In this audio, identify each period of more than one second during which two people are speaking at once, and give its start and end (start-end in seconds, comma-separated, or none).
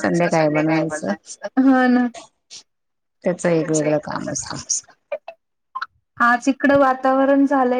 none